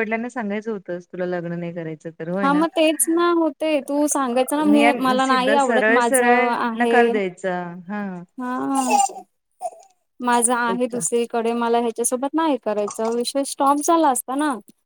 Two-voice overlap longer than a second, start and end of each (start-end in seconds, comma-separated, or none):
5.2-7.1